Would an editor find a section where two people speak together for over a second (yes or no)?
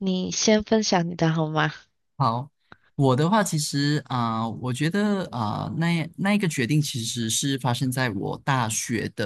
no